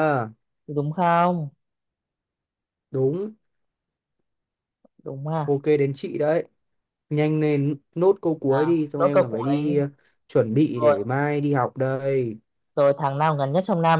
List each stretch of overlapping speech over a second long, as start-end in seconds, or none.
8.4-9.8